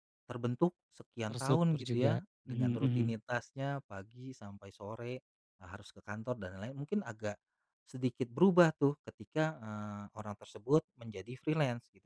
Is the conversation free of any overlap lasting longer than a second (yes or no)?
no